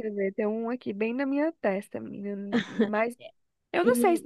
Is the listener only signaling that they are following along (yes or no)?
yes